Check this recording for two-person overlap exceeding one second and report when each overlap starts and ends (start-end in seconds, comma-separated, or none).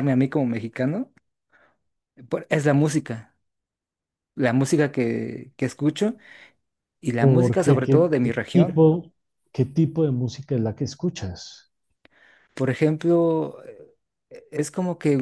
7.2-8.8